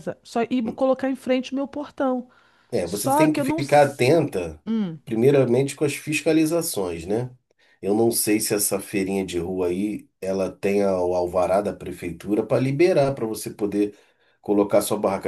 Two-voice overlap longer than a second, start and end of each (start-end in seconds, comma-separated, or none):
2.8-4.1